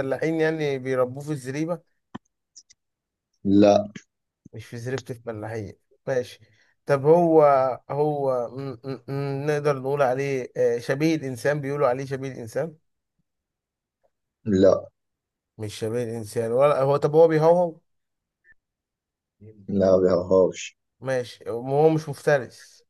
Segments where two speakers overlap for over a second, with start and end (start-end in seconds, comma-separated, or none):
none